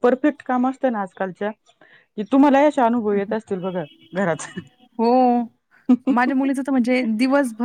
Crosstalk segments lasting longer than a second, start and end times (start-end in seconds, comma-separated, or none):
none